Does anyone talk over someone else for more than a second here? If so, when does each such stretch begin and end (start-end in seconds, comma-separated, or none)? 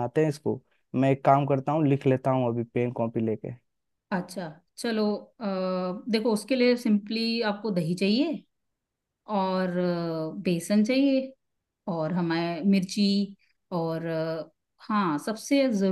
none